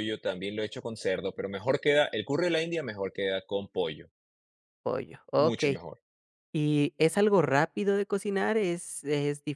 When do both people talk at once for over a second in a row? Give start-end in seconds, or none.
none